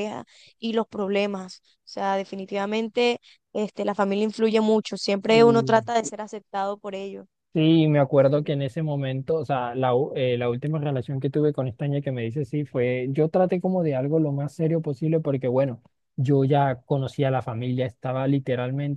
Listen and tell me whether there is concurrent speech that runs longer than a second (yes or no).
no